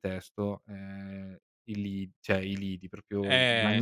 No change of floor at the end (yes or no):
no